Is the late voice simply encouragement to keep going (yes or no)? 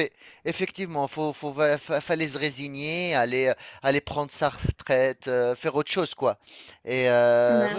yes